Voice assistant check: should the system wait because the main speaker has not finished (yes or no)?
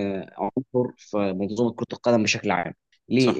yes